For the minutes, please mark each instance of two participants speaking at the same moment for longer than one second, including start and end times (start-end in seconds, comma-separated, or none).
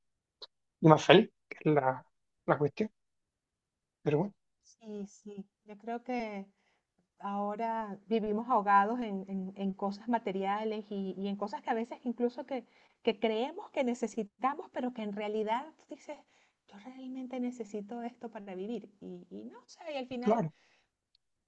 none